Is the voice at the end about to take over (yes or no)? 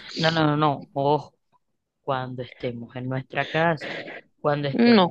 yes